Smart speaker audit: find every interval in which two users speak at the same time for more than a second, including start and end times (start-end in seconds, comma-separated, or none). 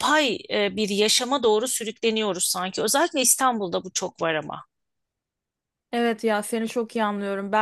none